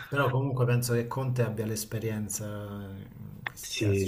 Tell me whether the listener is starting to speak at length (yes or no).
yes